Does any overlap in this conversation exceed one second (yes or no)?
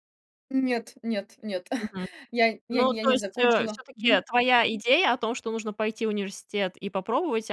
yes